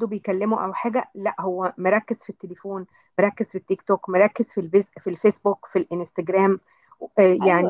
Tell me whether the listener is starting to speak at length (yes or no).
yes